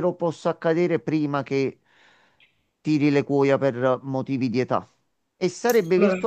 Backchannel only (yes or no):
yes